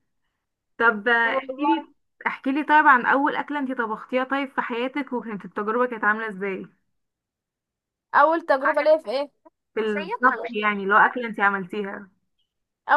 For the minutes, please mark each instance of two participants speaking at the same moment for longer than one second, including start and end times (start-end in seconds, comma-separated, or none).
9.8-11.1